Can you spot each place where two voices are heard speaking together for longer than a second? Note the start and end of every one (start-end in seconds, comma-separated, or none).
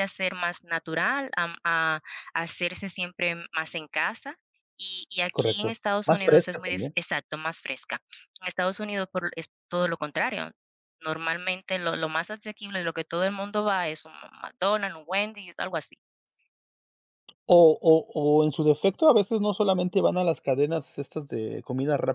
5.3-7.0